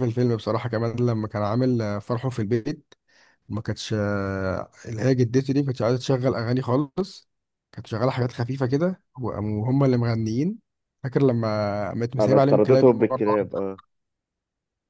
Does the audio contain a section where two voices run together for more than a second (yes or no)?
yes